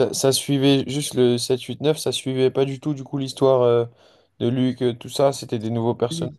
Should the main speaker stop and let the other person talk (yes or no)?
yes